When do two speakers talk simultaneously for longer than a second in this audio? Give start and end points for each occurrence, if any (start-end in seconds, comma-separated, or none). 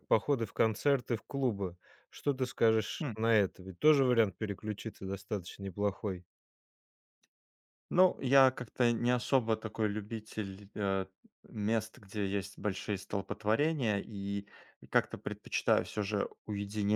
none